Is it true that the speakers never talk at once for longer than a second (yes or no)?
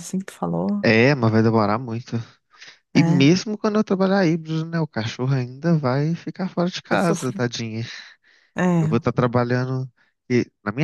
yes